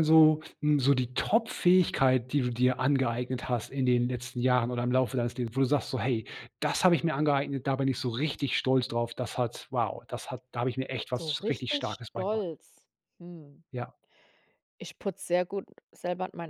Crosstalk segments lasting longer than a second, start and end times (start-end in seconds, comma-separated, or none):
11.2-12.5